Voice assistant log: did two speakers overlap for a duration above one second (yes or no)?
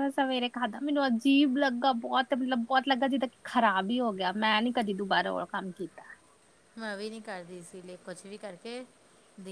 no